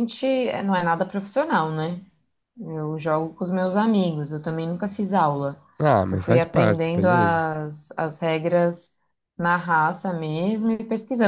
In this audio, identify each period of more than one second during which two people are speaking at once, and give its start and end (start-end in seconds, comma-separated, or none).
6.1-7.4